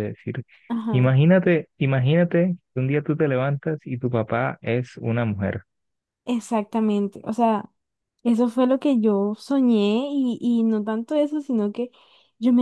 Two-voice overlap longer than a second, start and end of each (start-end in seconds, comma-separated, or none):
none